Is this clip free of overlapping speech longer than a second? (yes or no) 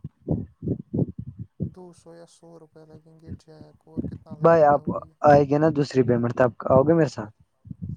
yes